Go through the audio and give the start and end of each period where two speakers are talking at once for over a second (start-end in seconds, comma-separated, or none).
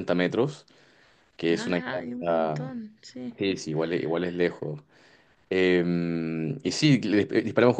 1.5-2.7